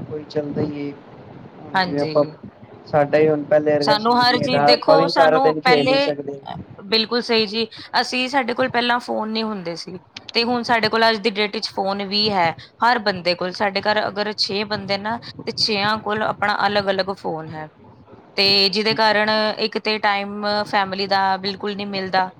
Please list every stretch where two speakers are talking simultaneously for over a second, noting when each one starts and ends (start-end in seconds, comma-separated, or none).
3.9-6.1